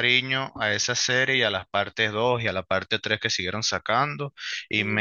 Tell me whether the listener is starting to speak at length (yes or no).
no